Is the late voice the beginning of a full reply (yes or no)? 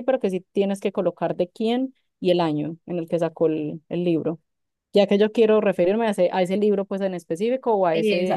yes